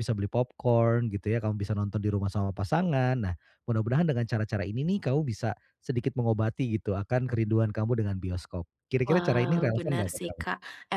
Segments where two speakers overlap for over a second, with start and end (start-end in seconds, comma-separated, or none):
9.0-10.4